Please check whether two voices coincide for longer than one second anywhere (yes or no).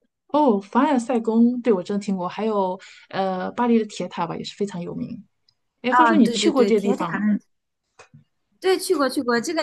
yes